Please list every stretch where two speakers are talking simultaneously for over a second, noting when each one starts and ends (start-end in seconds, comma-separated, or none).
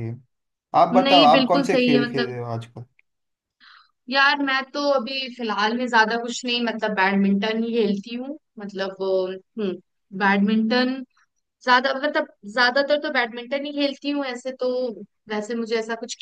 1.0-2.4